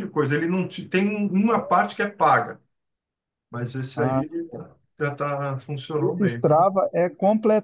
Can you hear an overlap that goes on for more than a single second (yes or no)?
no